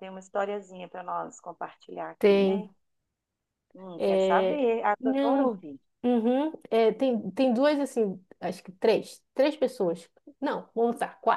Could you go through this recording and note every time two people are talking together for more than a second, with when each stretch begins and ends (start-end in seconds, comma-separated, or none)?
4.0-5.6